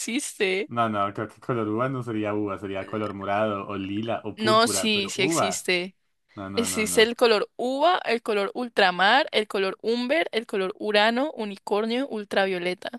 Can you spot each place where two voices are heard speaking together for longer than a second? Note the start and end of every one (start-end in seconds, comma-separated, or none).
4.4-5.7